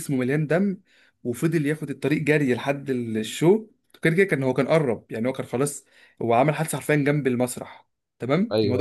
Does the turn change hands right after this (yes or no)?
no